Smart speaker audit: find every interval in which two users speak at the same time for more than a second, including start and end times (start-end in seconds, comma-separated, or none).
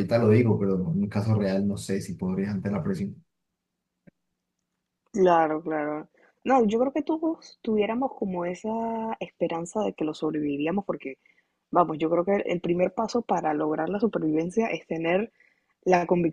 none